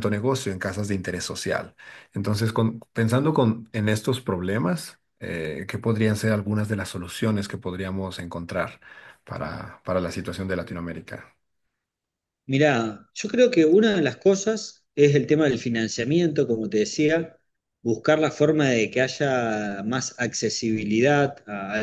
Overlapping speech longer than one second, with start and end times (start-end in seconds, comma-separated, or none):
none